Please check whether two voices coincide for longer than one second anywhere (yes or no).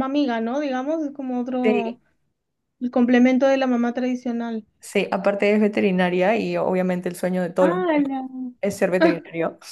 no